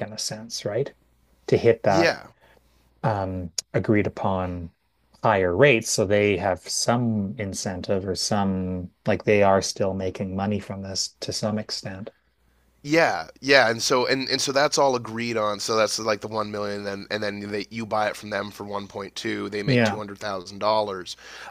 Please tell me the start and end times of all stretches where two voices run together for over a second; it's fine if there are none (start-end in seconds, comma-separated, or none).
none